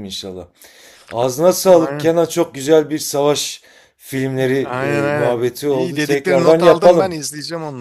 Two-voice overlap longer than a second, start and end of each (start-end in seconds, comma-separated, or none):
5.1-7.1